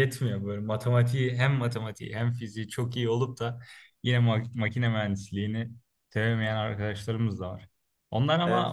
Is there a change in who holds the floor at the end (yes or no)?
no